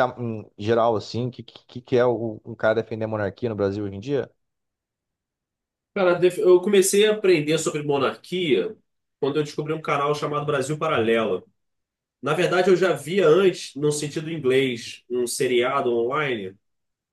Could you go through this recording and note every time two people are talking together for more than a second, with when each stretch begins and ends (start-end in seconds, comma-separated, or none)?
none